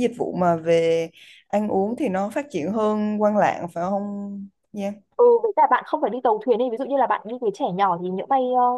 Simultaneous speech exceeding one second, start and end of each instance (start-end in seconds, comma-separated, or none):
none